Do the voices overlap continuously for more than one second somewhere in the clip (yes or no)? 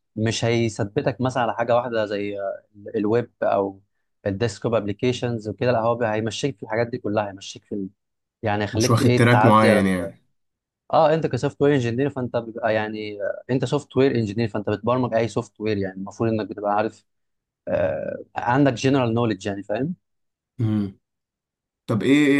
yes